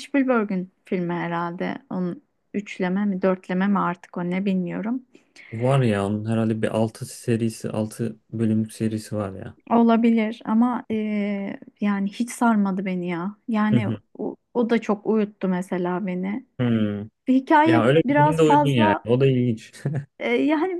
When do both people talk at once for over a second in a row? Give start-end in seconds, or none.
17.7-19.1